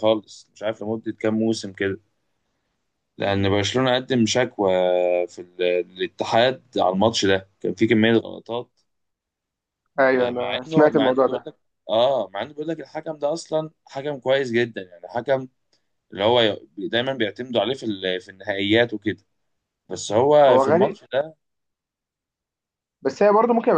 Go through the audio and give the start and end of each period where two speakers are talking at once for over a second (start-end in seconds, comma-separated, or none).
10.1-11.5